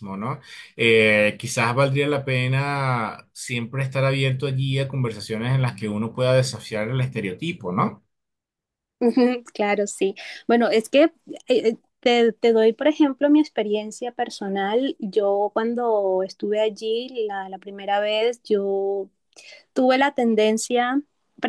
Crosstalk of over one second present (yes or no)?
no